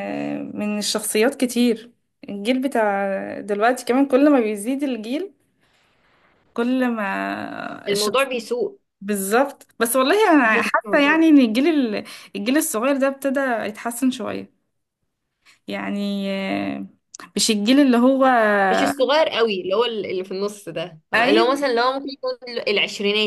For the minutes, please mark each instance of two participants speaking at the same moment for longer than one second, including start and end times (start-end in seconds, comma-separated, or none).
none